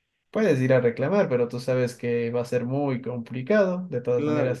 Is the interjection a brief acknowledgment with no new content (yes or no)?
yes